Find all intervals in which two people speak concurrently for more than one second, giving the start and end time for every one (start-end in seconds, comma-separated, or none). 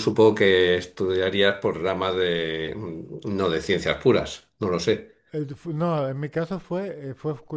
none